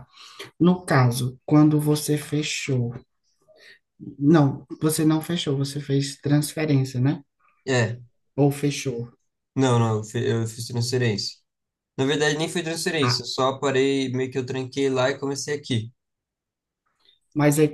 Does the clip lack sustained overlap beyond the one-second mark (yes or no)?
yes